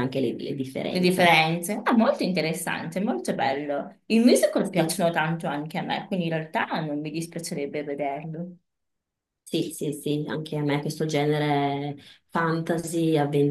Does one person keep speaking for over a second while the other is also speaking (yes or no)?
no